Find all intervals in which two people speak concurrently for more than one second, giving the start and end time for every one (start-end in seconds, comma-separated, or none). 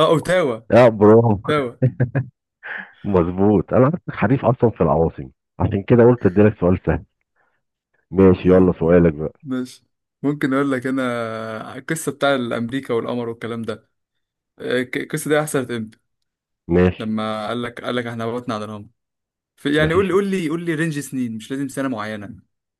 none